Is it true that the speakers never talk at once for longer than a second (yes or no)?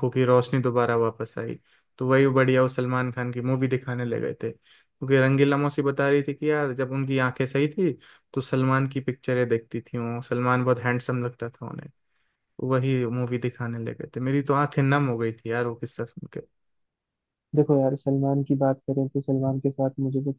yes